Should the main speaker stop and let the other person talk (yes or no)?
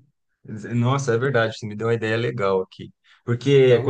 no